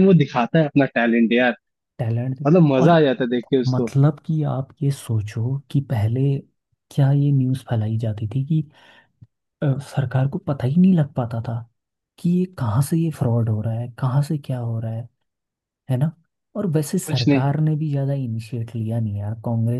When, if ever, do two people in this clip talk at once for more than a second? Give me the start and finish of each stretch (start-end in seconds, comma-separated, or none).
none